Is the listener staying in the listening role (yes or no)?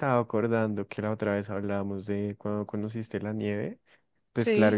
yes